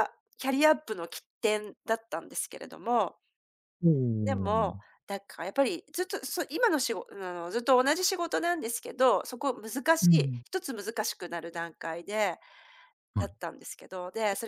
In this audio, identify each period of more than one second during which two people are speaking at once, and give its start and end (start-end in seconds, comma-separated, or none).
none